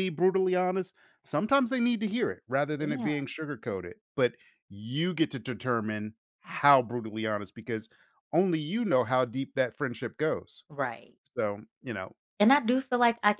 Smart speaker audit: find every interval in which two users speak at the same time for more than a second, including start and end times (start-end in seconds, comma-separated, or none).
none